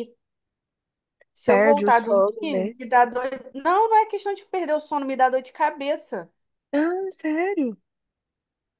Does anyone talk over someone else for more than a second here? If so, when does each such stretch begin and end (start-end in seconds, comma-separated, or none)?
1.4-2.7